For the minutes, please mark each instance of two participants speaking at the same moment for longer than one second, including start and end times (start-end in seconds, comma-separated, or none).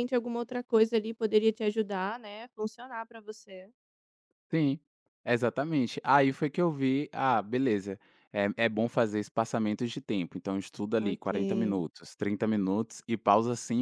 none